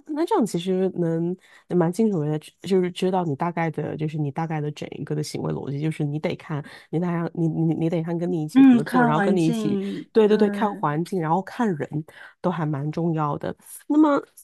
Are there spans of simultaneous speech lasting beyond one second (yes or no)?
yes